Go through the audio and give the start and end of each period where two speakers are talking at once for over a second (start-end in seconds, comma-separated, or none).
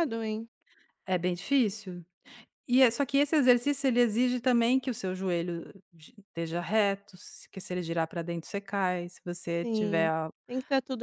none